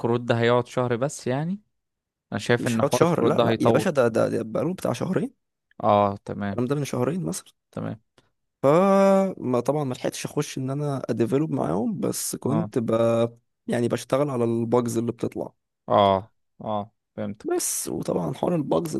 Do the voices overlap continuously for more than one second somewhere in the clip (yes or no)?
yes